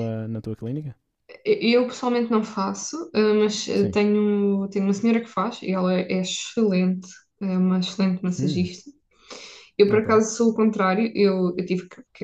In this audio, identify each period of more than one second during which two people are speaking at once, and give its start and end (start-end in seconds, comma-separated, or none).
none